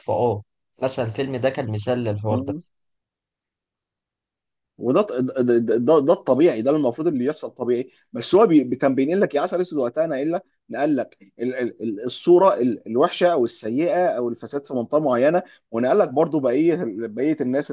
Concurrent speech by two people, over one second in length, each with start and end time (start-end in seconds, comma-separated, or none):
none